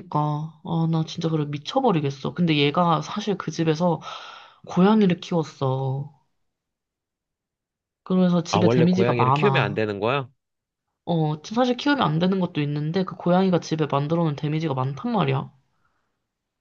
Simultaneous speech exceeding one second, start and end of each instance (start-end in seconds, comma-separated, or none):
8.5-9.9